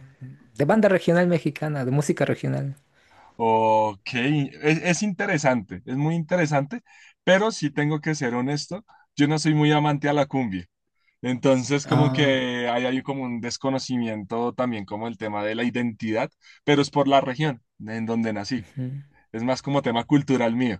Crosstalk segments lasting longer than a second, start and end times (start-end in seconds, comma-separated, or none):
none